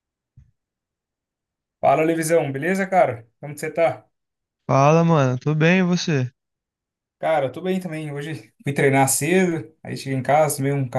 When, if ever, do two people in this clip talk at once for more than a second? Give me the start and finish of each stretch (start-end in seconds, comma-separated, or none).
none